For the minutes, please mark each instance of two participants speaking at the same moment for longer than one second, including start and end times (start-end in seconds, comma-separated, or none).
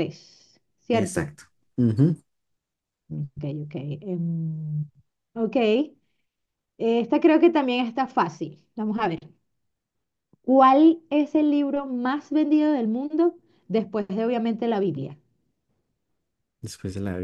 none